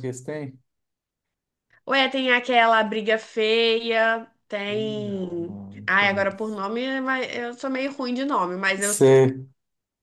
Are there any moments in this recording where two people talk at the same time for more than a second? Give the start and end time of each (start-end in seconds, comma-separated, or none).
4.7-6.6